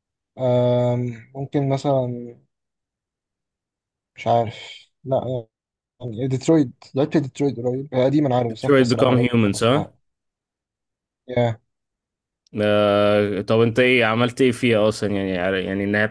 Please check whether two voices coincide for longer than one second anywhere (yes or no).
yes